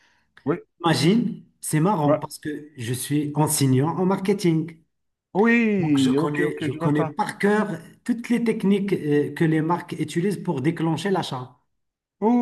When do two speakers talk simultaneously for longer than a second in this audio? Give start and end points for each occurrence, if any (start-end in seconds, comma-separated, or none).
5.8-7.2